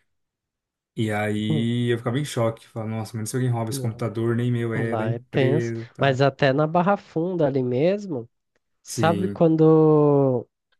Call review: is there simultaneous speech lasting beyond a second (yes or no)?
yes